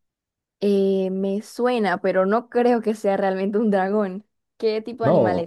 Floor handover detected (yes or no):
yes